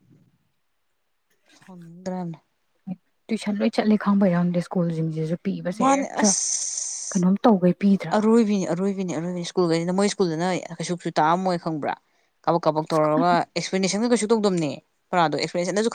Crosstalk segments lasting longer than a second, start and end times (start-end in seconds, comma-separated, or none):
none